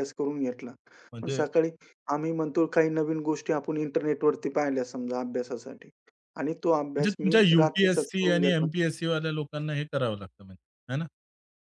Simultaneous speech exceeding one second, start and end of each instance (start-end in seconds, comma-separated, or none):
7.0-8.7